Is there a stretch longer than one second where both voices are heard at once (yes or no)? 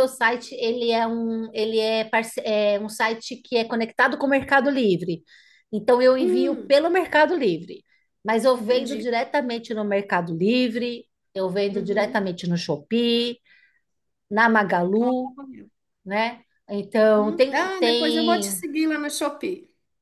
yes